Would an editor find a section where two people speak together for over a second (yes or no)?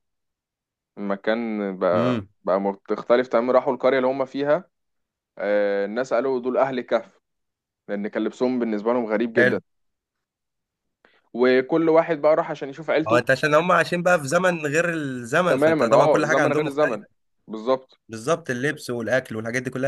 yes